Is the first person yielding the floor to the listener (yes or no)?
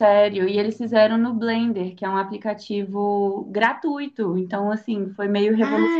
yes